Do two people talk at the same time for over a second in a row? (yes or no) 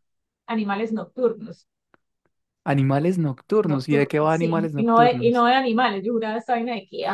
yes